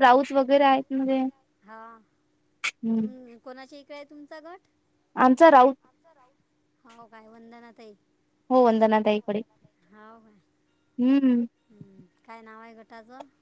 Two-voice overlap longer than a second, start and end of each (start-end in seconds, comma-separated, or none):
none